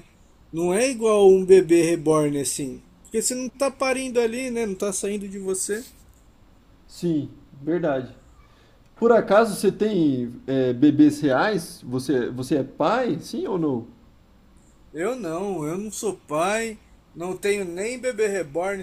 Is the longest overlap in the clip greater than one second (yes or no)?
no